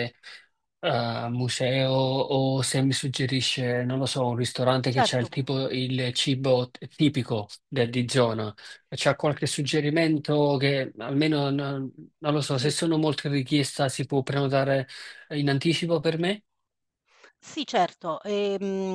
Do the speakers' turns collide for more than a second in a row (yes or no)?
no